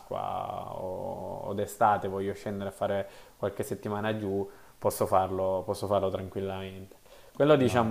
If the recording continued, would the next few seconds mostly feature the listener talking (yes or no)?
no